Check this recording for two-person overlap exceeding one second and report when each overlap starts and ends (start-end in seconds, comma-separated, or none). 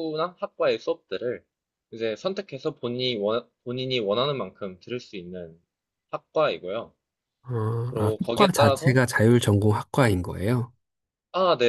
8.0-9.3